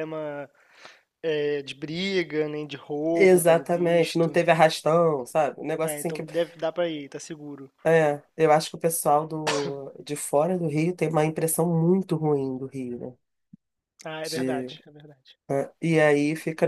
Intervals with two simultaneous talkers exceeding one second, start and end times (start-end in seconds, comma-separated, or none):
3.1-4.4